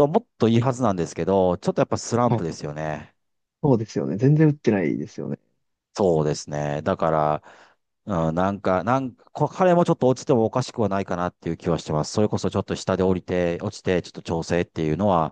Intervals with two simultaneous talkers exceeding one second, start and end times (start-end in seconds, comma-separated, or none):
none